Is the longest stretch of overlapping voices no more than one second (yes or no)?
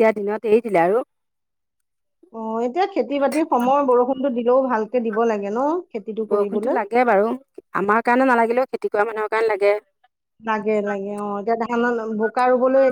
yes